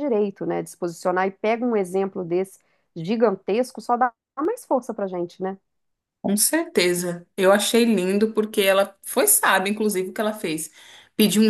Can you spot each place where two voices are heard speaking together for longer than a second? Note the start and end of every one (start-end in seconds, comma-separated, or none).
none